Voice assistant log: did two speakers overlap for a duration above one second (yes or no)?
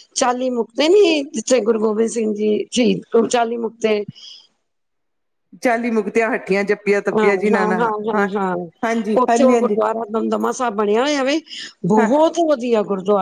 no